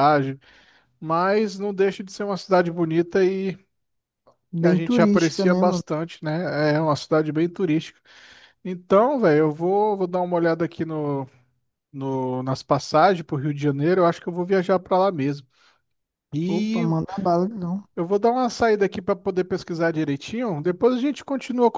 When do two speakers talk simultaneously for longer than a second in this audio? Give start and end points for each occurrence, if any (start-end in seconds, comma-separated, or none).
4.6-5.8